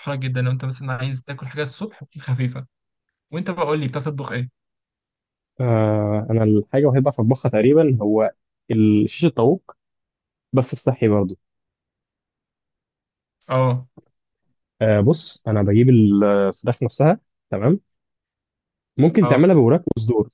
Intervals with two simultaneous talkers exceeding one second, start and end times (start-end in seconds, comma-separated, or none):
none